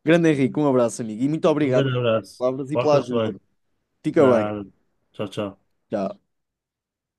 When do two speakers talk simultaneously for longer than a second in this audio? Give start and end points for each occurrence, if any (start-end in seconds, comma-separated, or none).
1.6-3.4